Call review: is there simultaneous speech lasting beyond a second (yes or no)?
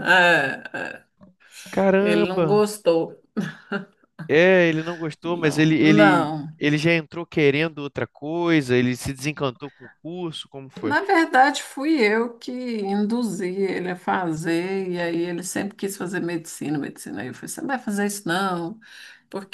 yes